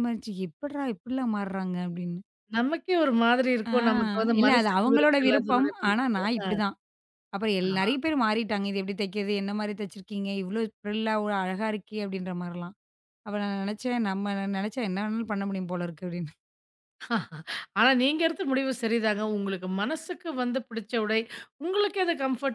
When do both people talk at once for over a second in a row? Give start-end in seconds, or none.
4.4-6.2